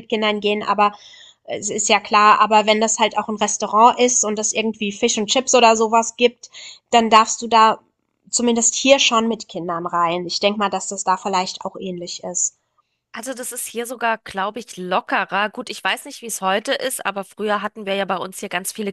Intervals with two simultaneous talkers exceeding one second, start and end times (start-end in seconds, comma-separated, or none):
none